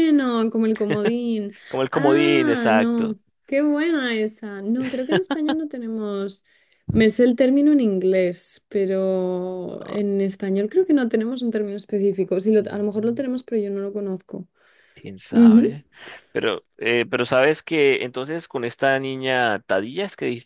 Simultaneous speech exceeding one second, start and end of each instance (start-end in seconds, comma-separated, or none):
1.9-3.2